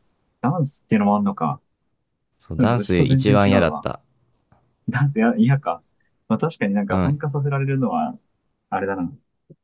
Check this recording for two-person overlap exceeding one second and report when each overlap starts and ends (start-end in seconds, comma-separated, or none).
2.6-3.9